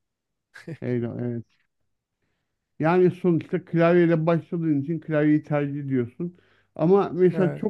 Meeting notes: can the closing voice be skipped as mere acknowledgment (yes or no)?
yes